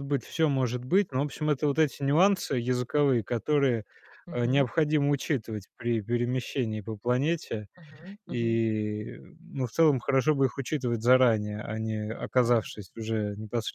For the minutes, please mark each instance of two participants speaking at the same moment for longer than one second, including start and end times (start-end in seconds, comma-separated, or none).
none